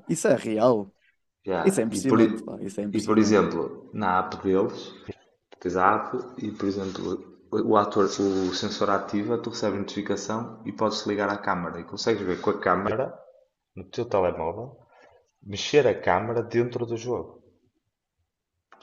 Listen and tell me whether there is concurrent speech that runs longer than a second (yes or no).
yes